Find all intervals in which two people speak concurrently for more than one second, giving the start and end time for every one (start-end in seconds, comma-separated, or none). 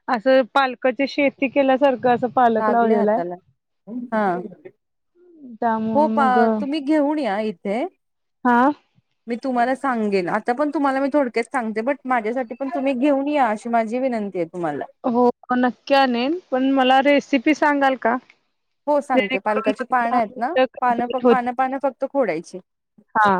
19.1-21.5